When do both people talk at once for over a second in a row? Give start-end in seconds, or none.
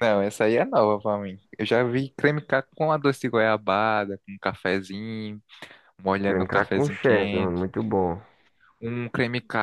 6.3-7.7